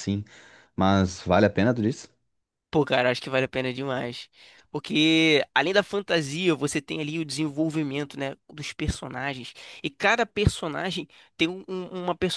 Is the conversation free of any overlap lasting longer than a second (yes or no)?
yes